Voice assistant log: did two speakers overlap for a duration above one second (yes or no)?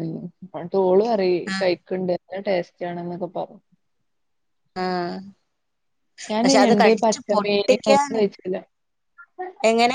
yes